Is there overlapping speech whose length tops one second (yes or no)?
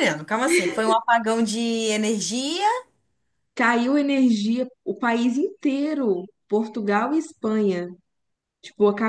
no